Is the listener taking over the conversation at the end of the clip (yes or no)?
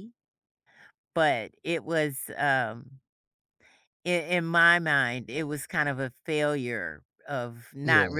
no